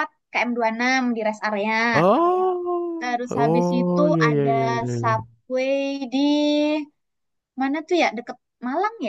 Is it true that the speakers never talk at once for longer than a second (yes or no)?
no